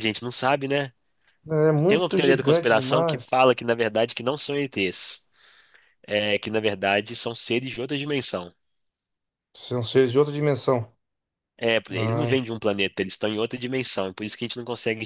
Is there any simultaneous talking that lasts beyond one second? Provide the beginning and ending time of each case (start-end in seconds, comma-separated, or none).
1.9-3.3